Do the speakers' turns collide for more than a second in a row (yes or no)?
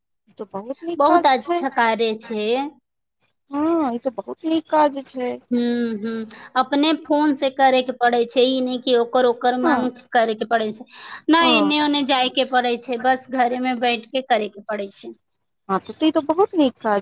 no